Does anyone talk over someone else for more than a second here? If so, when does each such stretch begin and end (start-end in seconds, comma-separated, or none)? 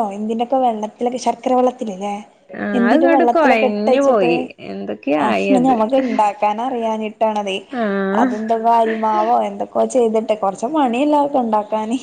2.8-4.3